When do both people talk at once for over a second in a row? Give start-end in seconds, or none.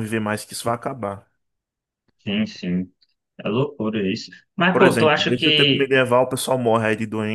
4.7-6.0